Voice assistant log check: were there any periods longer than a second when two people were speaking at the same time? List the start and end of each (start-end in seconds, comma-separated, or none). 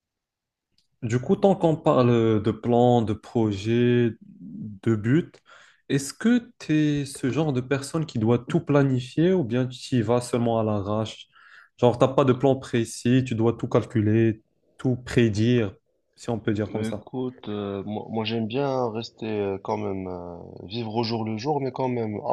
none